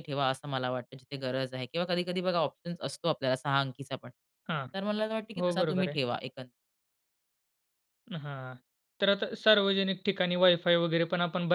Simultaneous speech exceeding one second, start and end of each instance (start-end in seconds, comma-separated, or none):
none